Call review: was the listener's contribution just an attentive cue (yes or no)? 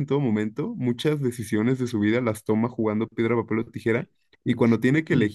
yes